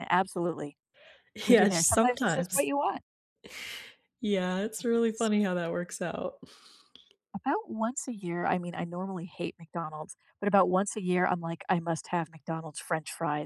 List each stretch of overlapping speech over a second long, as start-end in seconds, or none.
1.5-2.7